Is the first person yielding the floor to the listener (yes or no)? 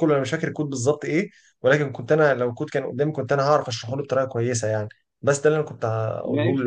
yes